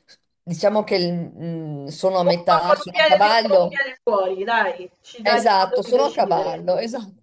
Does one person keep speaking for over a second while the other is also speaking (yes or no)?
yes